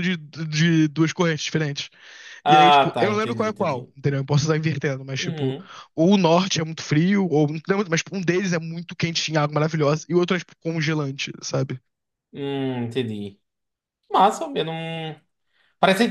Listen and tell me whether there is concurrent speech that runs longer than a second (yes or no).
yes